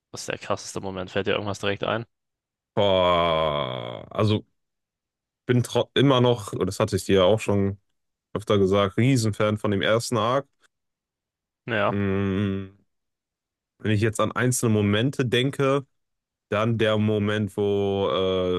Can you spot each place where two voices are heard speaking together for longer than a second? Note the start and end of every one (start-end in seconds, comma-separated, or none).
none